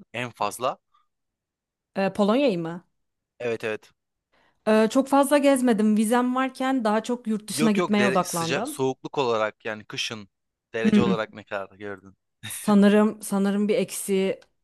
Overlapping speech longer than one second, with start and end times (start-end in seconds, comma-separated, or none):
7.5-8.8